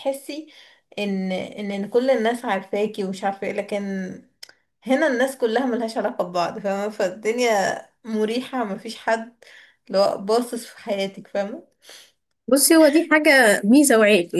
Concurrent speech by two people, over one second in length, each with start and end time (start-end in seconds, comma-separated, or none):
none